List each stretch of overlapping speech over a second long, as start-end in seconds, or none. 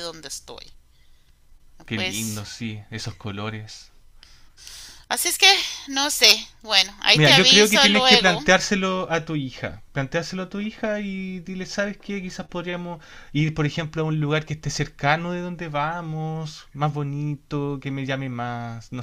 7.1-8.4